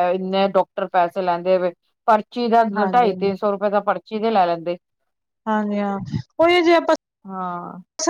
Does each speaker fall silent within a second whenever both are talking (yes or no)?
yes